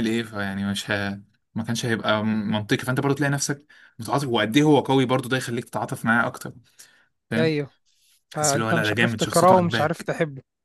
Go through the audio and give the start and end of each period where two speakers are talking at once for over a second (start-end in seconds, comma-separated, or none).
8.3-10.1